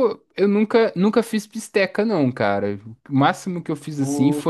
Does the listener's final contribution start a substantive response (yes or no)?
no